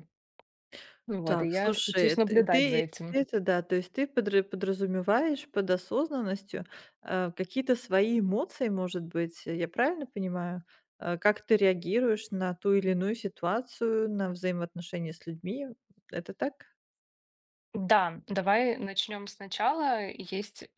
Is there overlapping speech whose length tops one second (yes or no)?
yes